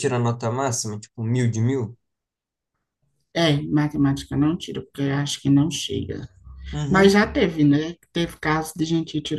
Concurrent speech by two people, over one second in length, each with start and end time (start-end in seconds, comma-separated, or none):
none